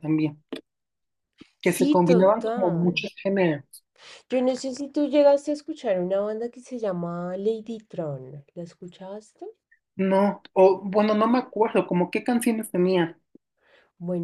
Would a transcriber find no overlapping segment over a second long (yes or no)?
no